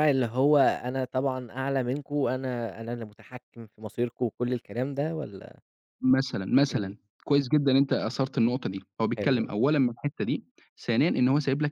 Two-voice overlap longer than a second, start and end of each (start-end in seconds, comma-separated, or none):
none